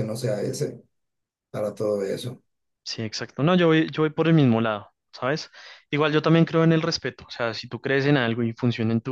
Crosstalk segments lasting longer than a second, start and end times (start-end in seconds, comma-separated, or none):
none